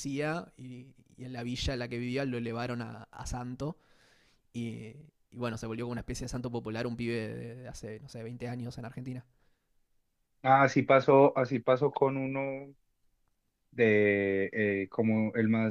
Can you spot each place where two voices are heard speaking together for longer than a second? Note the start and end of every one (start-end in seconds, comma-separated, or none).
none